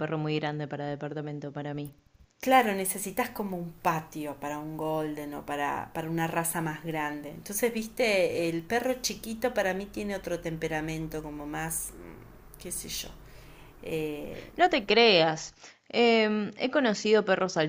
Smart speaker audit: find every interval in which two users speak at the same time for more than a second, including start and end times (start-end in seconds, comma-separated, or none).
none